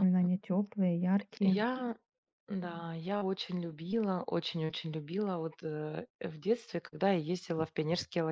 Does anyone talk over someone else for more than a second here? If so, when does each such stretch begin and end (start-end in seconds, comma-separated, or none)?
none